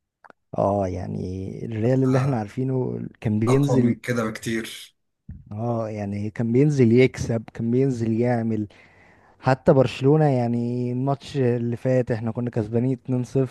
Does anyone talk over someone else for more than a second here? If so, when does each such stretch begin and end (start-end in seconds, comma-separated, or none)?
none